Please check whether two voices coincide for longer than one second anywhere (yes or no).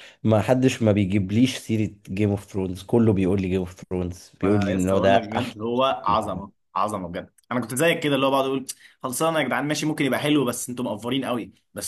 yes